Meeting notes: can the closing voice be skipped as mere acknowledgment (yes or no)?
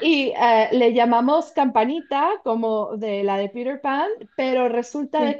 yes